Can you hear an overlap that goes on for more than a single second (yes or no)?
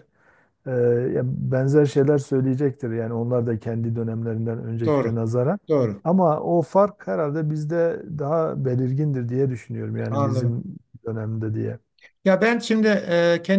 no